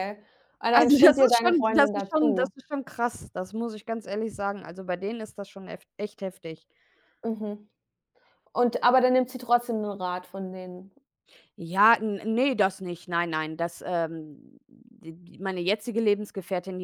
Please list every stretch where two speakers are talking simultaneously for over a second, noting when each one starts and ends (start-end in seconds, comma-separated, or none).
0.7-2.5